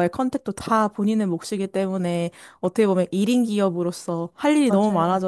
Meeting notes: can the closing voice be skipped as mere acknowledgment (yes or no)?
yes